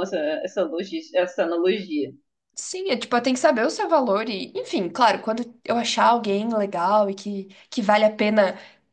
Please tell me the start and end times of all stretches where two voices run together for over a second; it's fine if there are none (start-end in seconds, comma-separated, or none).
none